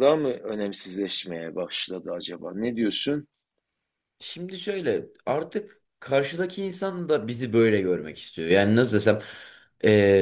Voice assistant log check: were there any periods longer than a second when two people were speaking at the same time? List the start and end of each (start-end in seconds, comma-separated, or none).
none